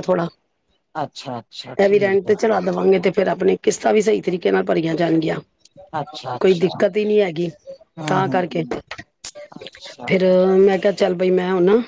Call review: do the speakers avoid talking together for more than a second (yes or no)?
yes